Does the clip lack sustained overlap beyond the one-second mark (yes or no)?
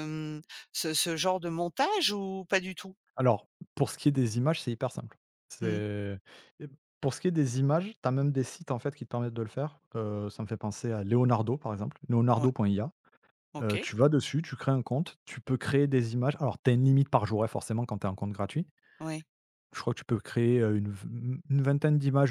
yes